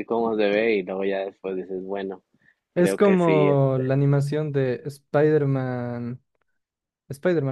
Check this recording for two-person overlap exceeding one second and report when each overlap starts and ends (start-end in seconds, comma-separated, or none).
2.7-4.0